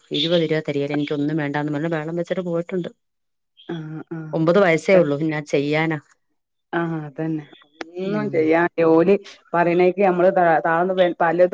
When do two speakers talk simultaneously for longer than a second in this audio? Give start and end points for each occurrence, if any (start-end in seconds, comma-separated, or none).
none